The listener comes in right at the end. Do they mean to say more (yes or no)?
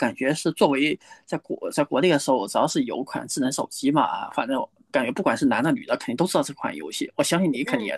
yes